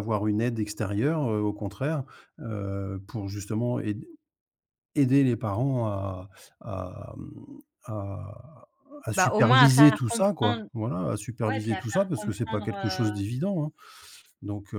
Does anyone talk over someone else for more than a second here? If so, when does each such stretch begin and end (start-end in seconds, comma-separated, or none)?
9.1-10.6, 11.5-13.1